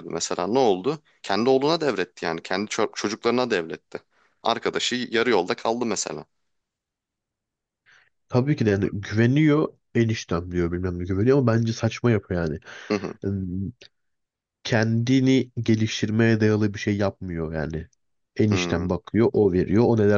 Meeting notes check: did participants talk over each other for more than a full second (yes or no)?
no